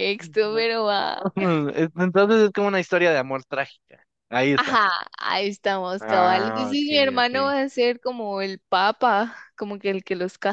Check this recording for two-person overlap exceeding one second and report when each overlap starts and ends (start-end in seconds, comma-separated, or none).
6.0-7.5